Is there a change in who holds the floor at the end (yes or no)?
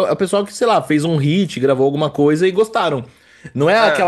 no